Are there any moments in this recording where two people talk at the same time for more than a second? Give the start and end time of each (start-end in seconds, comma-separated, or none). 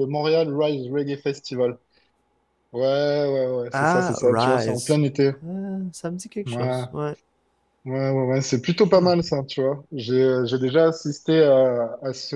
3.7-5.0